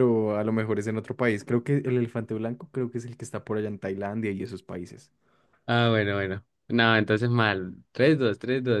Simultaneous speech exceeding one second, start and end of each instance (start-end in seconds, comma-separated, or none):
none